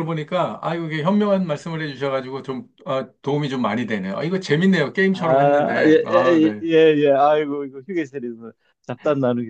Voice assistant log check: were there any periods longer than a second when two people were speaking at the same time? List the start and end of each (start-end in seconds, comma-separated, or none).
5.1-6.6